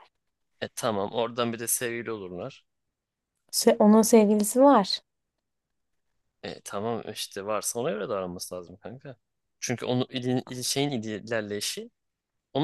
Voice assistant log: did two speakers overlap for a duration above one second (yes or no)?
no